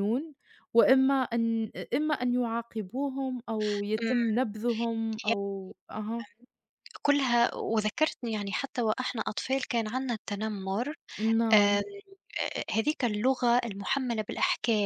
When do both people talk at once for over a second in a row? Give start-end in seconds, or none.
none